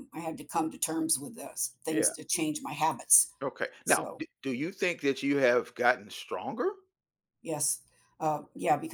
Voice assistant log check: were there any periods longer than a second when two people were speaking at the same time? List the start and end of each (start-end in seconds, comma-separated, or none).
none